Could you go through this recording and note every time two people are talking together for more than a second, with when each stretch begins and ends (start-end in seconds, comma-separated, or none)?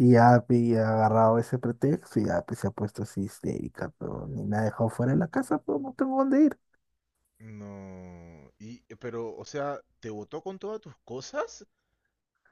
none